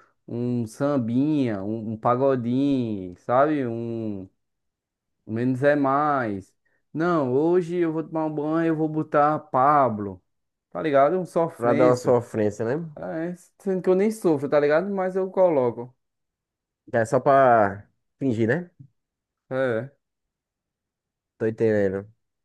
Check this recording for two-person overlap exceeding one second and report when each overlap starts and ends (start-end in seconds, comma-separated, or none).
none